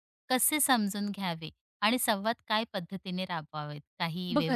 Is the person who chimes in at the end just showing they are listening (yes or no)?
no